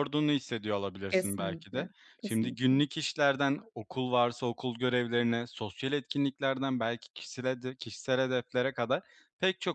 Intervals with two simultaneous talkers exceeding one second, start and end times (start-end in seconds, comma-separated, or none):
1.1-2.8